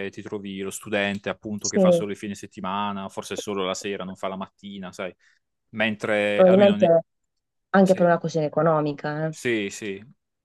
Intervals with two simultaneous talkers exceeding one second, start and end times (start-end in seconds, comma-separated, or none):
none